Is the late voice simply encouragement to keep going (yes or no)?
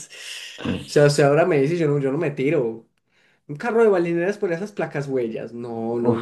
no